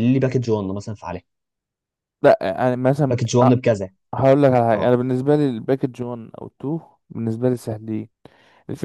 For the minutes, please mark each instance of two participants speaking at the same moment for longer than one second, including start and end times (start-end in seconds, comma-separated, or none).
none